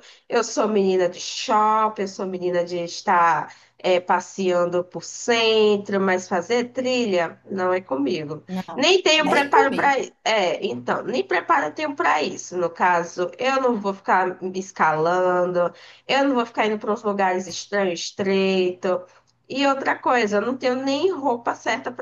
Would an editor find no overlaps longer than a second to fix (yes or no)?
no